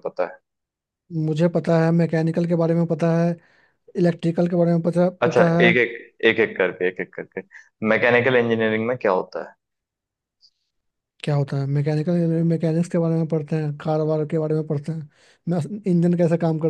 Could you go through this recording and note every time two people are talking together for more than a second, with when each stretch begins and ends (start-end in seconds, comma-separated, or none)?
none